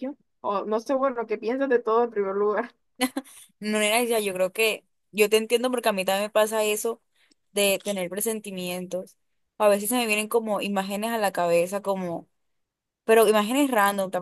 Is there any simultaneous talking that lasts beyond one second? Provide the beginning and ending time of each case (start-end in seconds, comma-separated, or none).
none